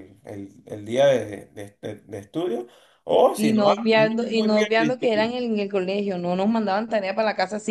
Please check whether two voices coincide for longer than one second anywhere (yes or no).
yes